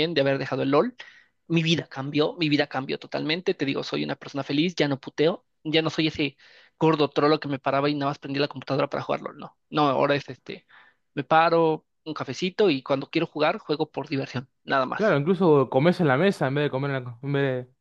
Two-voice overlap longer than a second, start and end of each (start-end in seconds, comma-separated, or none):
none